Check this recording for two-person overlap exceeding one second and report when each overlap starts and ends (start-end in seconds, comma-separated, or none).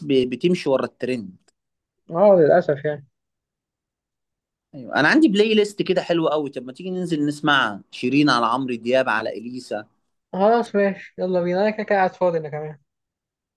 none